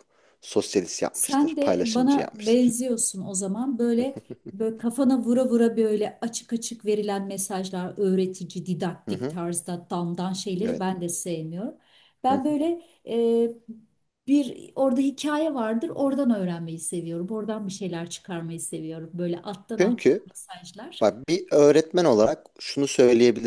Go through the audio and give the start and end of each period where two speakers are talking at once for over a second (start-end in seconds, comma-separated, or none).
1.1-2.7